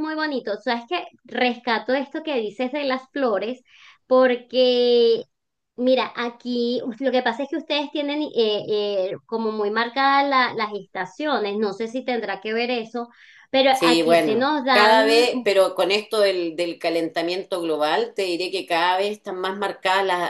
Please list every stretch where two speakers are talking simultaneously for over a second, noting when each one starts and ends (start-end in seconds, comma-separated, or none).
13.7-15.3